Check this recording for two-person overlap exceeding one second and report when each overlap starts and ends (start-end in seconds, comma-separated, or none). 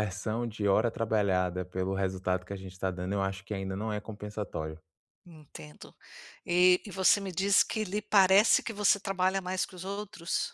none